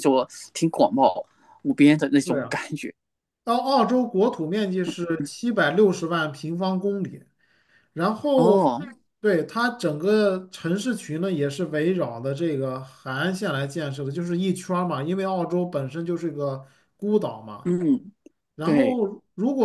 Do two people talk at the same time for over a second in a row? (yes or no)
no